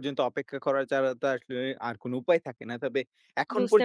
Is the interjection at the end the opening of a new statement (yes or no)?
yes